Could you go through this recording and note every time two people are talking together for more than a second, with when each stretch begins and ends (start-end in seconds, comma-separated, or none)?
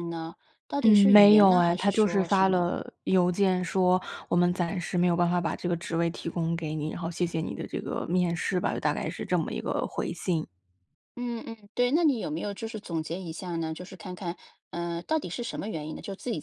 0.8-2.6